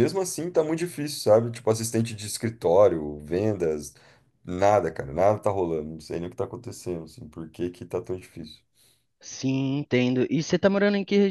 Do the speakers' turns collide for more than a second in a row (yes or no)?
no